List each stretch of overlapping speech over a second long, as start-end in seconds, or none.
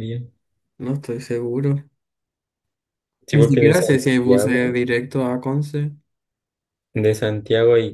3.3-4.8